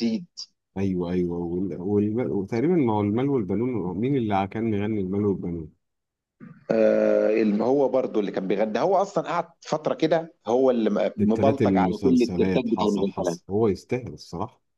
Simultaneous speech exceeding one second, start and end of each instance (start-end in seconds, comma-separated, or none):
11.2-13.4